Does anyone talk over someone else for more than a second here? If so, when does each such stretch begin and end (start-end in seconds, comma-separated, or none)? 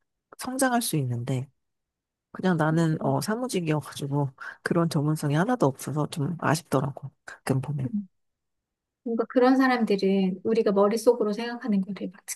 none